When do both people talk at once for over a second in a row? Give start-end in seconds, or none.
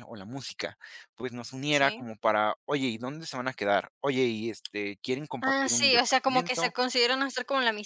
5.5-6.7